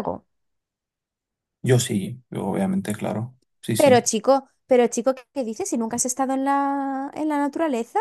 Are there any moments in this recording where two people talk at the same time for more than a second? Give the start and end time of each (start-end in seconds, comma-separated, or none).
none